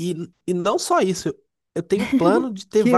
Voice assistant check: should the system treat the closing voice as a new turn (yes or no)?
no